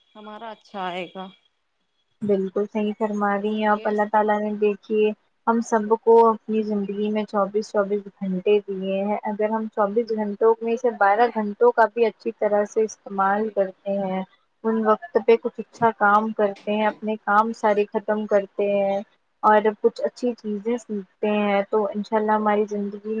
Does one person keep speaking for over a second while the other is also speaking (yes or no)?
no